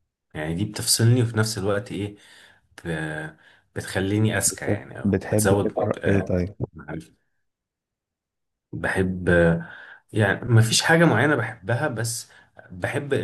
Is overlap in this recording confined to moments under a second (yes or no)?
no